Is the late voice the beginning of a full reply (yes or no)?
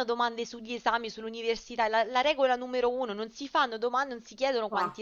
no